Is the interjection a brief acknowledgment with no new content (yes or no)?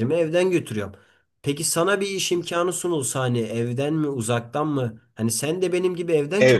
no